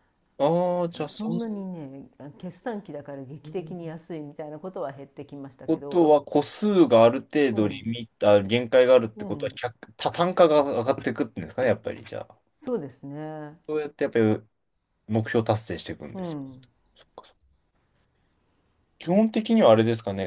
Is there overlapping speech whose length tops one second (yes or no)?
no